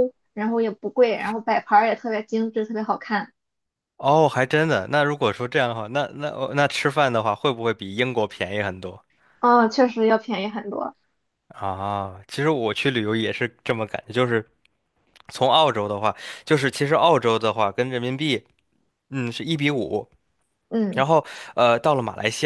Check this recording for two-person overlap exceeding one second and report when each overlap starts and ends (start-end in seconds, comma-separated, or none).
none